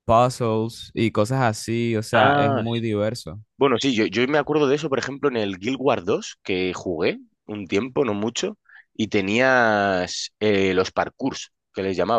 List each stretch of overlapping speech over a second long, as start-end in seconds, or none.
none